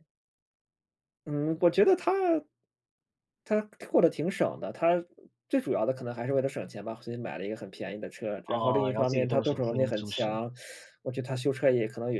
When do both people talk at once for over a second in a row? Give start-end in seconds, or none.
8.4-10.4